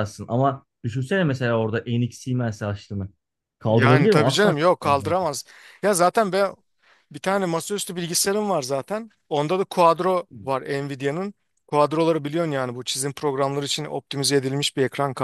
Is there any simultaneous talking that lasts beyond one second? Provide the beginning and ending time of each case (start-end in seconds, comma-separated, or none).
3.7-5.2